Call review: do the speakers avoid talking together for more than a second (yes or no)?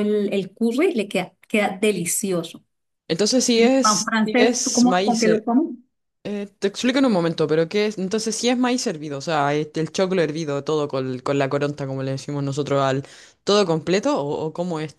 no